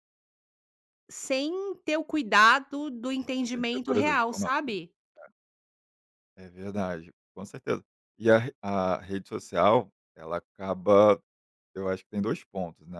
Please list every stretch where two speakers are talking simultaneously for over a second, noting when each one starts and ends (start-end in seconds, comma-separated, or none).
3.4-4.8